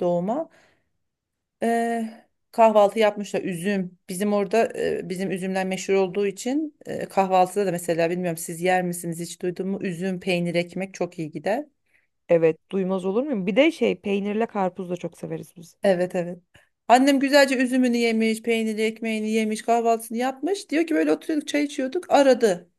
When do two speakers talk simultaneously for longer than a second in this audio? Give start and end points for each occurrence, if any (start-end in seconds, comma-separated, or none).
none